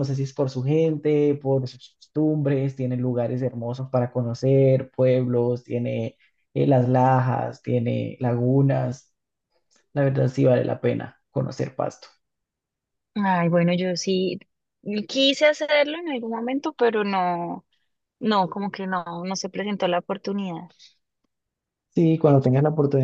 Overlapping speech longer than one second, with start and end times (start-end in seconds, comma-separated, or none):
none